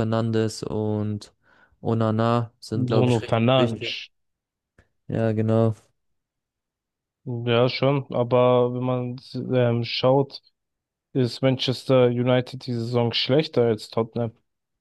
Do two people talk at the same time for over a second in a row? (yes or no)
yes